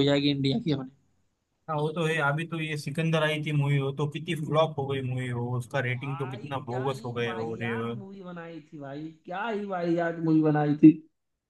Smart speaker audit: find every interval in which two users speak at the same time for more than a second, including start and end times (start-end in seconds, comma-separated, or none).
6.0-7.8